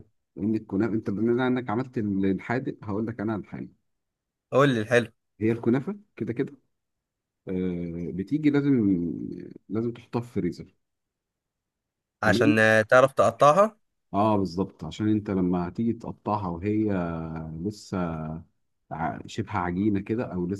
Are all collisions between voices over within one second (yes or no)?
yes